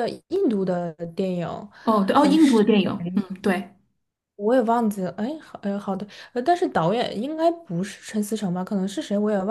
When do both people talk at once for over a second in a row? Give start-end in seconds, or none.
none